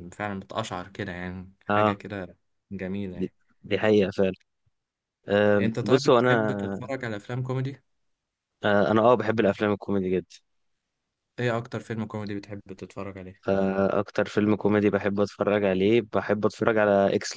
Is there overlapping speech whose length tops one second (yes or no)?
yes